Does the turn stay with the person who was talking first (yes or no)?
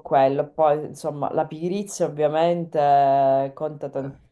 yes